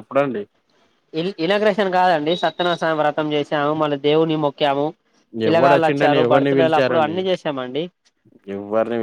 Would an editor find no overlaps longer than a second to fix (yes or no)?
no